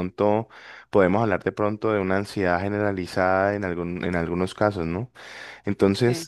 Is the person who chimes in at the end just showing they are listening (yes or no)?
yes